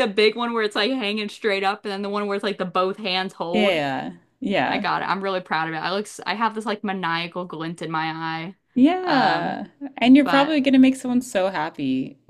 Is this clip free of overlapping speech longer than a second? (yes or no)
yes